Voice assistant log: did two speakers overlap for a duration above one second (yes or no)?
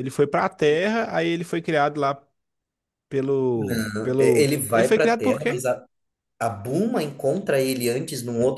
yes